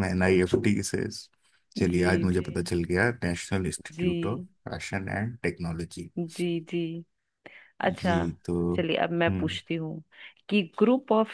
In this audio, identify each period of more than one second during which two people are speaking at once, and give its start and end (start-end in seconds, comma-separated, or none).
none